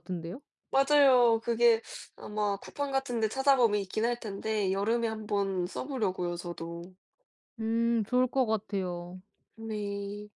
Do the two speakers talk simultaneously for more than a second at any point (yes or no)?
no